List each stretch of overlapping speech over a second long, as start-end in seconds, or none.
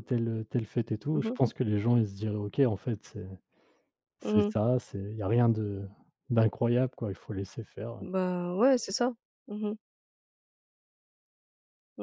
none